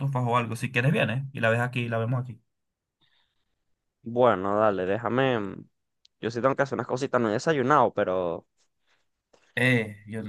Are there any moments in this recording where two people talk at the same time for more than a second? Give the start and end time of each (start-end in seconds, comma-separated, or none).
none